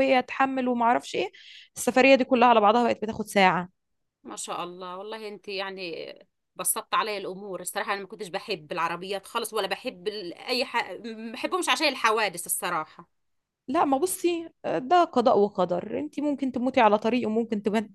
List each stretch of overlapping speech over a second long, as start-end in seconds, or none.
none